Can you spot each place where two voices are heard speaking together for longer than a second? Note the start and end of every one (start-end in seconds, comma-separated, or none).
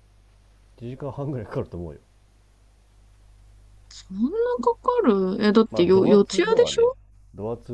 5.7-6.9